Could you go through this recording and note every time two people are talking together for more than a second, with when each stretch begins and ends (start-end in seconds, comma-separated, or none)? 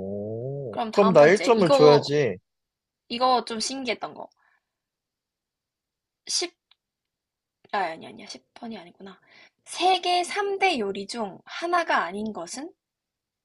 0.7-2.1